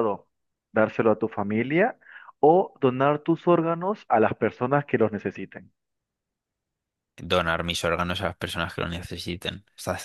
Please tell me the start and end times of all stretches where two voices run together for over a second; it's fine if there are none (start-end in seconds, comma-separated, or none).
none